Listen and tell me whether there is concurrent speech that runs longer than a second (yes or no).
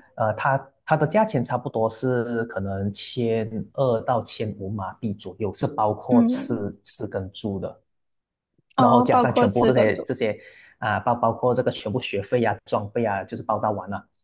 yes